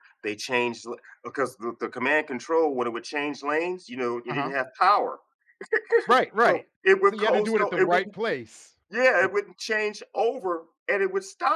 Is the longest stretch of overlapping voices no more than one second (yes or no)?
no